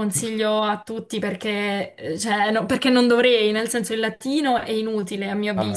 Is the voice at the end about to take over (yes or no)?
yes